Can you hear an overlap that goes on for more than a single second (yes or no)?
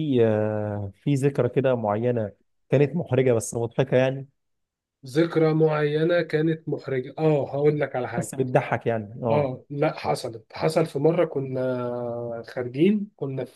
no